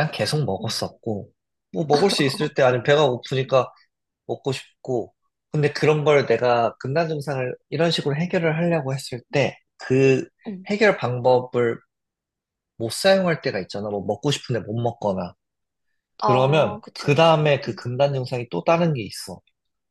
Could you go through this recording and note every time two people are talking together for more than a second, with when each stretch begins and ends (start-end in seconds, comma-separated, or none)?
16.2-17.8